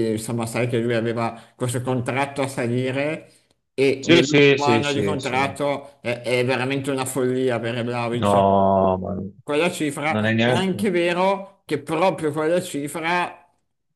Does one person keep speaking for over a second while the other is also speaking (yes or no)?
yes